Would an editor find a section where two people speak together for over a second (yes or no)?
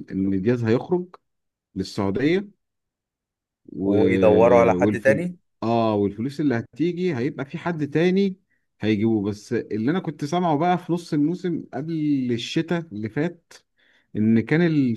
no